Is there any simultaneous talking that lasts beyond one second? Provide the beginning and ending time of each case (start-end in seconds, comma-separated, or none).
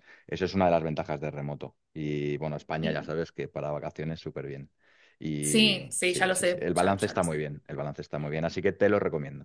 5.4-7.5